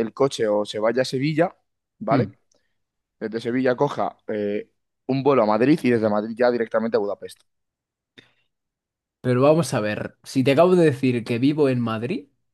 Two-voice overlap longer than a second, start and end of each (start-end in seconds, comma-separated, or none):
none